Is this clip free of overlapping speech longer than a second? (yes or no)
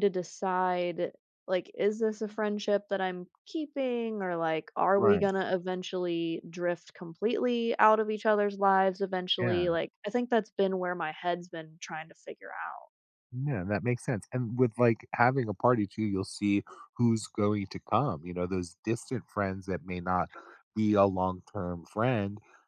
yes